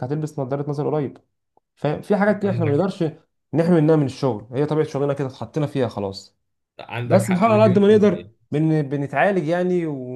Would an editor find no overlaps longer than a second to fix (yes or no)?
no